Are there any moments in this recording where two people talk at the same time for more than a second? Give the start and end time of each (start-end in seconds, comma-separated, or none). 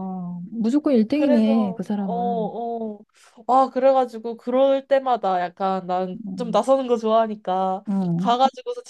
1.1-2.5